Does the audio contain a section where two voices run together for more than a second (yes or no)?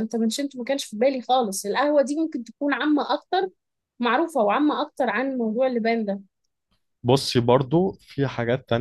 no